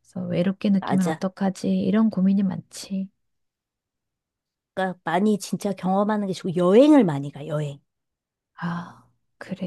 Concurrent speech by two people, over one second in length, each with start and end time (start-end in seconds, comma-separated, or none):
none